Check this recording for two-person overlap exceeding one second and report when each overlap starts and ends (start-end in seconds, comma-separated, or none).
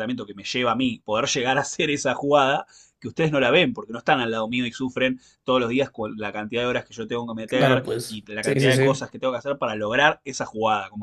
7.5-9.1